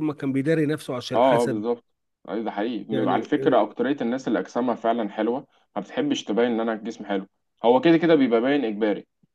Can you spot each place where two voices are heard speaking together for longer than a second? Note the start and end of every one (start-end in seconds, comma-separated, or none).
none